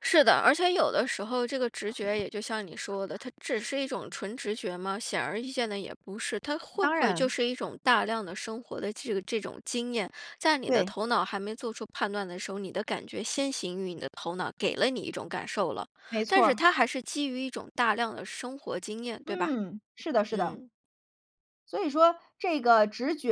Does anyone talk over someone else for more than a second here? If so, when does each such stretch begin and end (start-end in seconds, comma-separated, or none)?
none